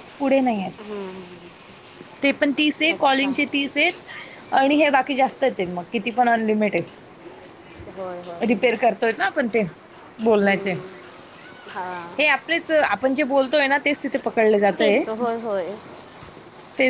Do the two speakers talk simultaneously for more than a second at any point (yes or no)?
no